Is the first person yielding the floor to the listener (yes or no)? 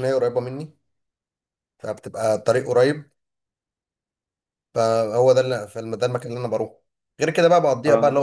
no